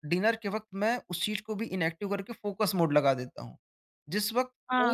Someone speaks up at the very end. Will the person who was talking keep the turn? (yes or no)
no